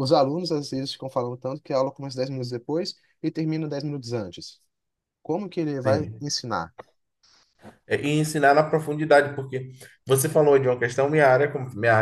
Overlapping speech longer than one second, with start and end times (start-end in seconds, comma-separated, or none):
none